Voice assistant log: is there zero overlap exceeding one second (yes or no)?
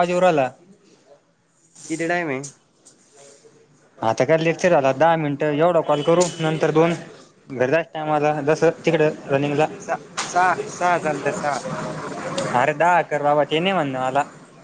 yes